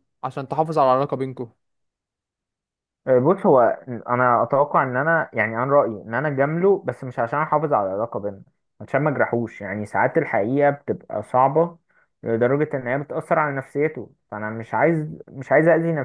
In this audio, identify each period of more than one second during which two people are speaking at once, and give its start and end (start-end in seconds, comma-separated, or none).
none